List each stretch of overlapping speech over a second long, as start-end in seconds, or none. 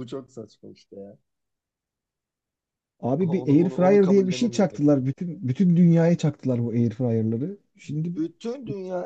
3.2-4.9